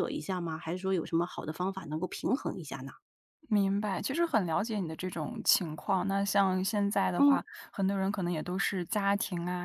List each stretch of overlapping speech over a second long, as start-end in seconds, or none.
none